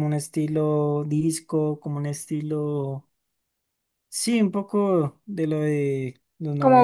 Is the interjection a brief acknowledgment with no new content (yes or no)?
yes